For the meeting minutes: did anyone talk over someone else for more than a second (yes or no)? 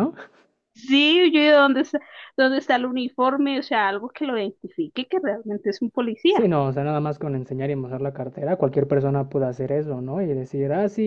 no